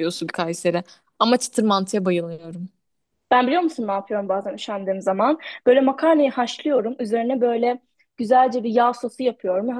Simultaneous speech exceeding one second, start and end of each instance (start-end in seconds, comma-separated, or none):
none